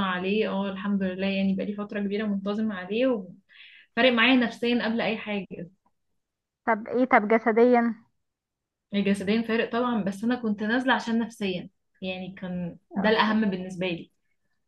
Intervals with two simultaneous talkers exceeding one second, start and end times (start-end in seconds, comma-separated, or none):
none